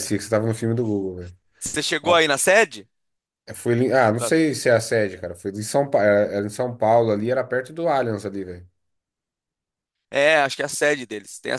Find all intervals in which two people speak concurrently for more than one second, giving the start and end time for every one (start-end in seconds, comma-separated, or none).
none